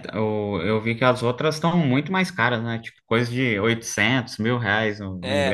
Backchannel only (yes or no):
no